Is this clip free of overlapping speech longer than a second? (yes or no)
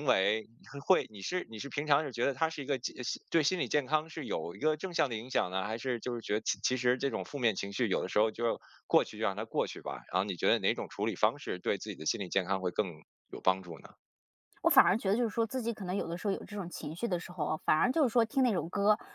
yes